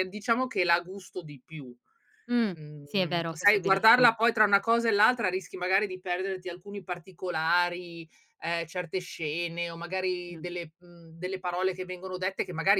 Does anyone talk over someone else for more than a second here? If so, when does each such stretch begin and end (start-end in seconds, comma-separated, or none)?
2.5-4.1